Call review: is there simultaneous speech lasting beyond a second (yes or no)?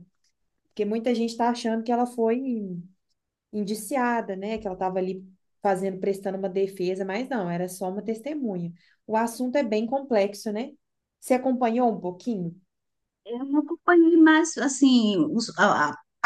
no